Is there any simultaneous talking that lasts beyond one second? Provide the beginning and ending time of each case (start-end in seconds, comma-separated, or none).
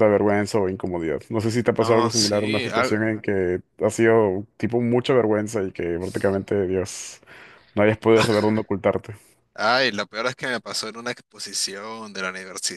1.7-3.0